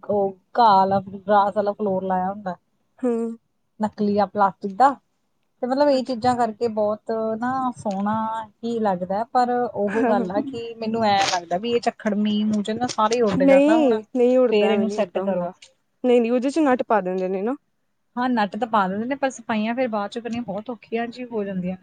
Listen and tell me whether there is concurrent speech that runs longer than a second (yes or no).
no